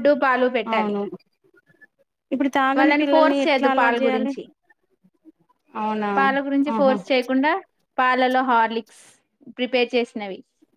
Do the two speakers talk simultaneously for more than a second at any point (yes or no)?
yes